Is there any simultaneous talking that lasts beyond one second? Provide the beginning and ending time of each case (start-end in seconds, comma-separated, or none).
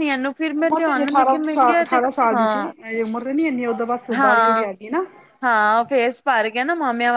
0.6-2.6